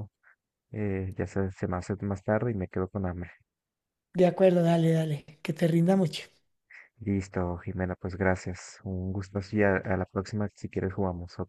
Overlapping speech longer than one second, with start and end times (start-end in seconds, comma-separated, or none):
none